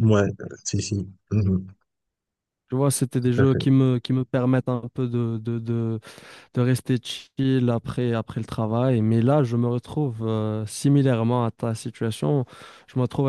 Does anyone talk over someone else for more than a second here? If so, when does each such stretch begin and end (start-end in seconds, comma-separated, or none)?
none